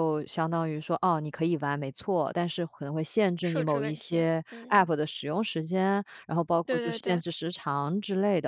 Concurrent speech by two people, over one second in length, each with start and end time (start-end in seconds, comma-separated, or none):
3.4-4.9